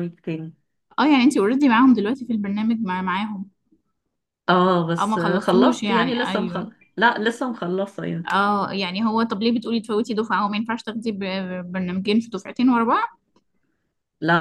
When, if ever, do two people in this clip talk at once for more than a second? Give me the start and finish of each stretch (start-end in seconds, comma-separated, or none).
5.0-6.7